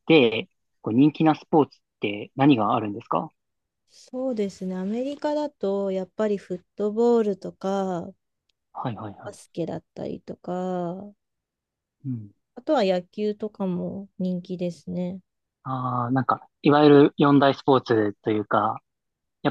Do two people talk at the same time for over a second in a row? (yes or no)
no